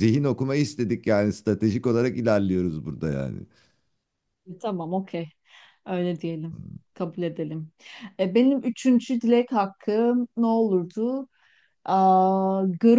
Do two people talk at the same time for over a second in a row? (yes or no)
no